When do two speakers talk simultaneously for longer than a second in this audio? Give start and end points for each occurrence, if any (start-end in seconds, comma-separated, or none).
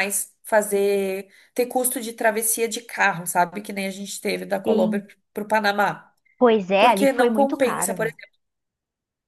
6.8-8.2